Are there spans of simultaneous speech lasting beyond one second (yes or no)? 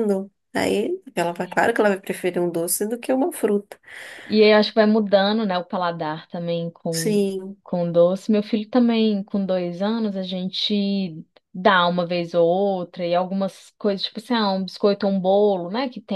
no